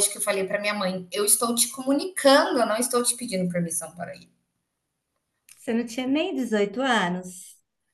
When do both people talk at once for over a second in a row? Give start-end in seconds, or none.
none